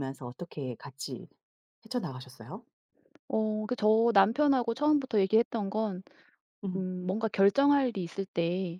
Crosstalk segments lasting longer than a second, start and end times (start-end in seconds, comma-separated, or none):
none